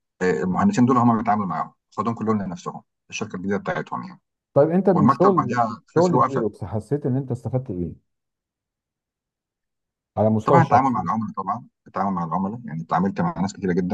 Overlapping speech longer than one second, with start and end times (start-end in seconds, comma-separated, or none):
4.9-6.5